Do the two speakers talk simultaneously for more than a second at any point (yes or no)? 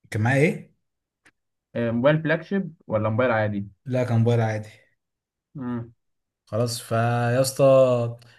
no